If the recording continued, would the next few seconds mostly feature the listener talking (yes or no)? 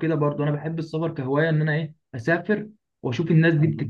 no